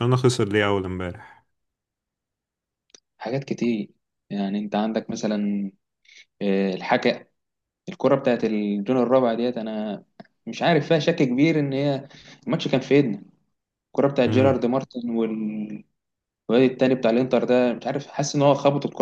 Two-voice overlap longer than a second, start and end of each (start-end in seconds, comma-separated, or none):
none